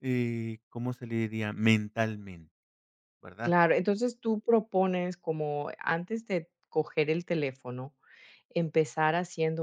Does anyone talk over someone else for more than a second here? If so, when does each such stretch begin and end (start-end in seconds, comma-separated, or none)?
none